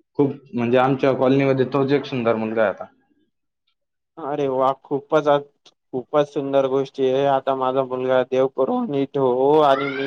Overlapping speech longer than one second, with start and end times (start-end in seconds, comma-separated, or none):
none